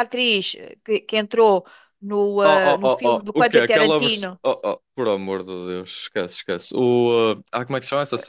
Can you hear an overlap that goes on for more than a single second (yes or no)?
yes